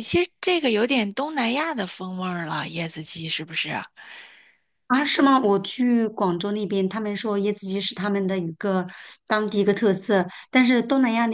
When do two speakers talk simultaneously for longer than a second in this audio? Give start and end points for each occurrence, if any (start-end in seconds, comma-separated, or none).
none